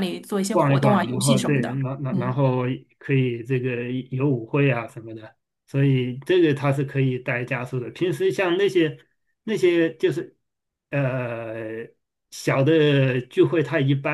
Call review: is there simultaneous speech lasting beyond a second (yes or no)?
yes